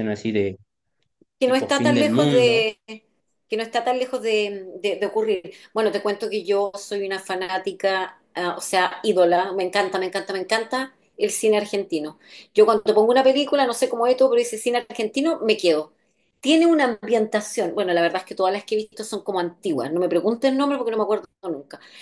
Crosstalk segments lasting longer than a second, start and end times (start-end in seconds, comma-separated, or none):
1.4-2.7